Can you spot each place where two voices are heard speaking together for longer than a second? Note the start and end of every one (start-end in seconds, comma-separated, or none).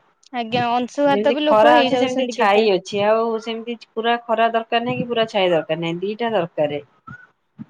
0.6-2.6